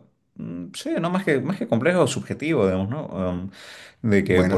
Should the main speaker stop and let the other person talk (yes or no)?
no